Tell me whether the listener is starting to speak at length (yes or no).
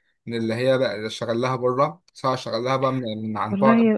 no